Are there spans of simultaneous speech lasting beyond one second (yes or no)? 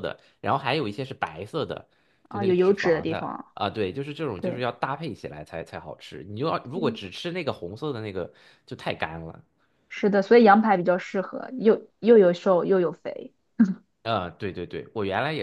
yes